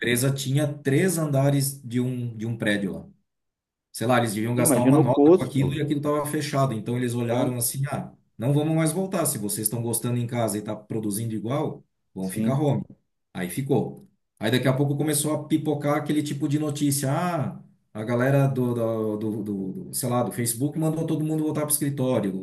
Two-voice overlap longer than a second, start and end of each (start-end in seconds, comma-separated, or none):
4.6-5.8